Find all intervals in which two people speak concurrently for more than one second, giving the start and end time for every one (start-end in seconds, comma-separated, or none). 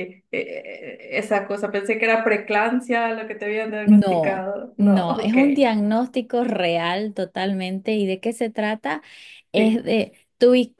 3.8-5.4